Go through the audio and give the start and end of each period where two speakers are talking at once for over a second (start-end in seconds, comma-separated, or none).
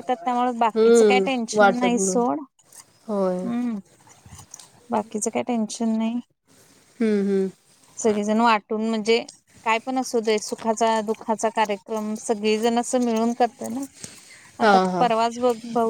0.8-2.1